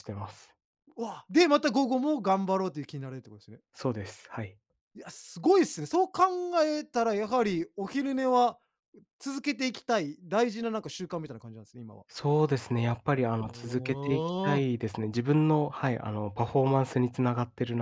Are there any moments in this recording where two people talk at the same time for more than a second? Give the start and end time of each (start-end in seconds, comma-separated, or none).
none